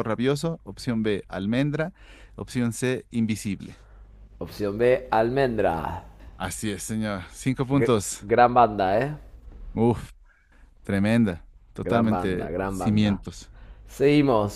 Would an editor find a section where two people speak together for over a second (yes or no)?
yes